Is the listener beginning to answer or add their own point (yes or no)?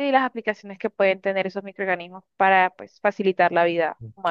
yes